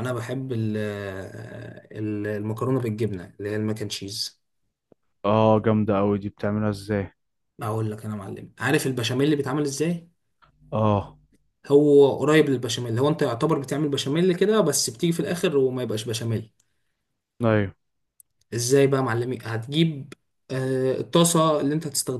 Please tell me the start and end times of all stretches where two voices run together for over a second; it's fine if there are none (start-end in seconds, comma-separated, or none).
none